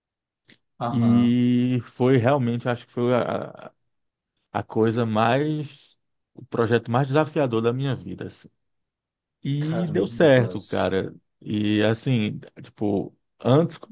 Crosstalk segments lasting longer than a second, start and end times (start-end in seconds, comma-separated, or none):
9.6-11.0